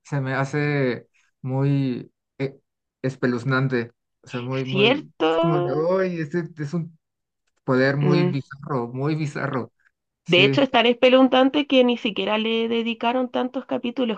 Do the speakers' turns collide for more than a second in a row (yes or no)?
yes